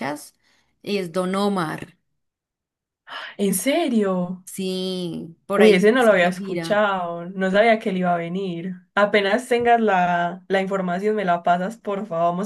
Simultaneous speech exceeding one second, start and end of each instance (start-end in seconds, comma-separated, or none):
5.5-6.8